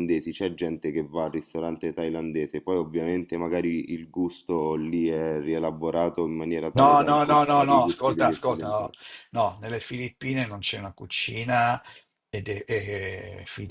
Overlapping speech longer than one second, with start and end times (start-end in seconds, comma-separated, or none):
6.7-8.9